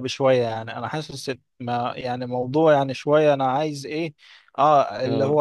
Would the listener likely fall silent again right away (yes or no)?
yes